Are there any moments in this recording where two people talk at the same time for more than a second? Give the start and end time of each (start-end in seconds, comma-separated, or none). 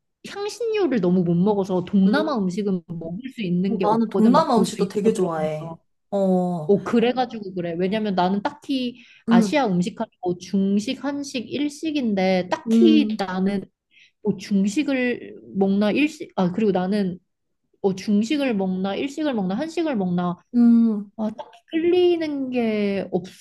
3.7-5.8